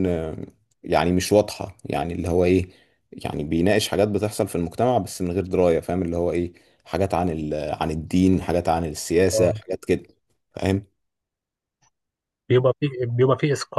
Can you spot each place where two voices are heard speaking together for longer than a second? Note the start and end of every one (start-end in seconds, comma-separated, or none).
none